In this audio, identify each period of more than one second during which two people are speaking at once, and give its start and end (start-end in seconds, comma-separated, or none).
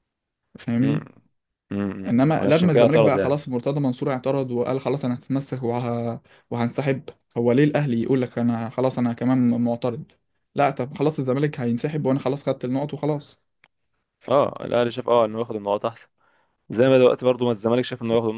2.1-3.4